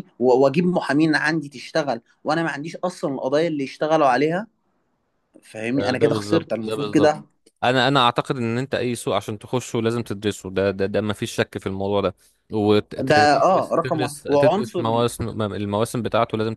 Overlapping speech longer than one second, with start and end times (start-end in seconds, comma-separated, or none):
5.8-7.1, 13.1-15.1